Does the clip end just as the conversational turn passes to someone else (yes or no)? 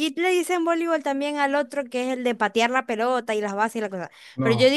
no